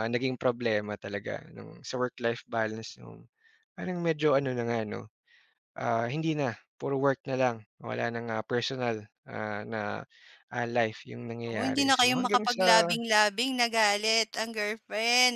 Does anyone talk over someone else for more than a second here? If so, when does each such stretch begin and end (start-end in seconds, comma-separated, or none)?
11.4-12.8